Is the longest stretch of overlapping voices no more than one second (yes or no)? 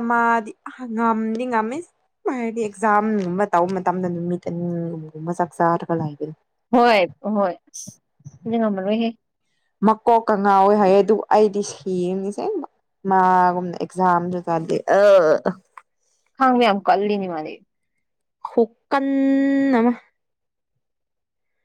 yes